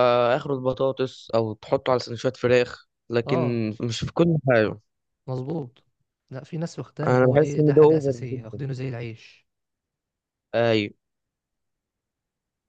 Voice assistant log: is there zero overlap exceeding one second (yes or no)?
no